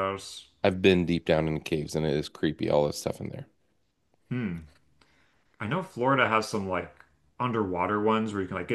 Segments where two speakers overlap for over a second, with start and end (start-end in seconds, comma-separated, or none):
none